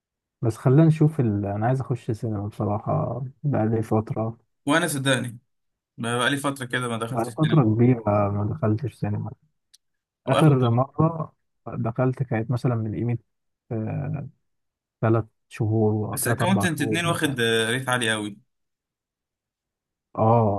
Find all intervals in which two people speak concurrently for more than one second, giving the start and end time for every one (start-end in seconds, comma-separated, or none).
16.1-17.4